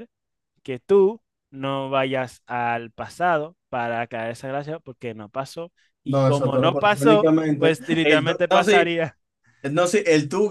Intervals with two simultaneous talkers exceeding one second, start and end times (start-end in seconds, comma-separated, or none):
6.0-8.9